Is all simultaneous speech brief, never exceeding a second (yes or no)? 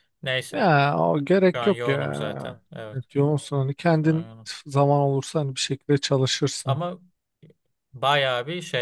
no